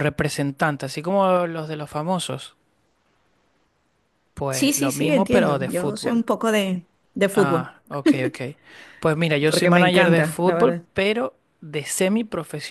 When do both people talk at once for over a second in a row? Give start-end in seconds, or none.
4.5-6.2, 9.5-10.9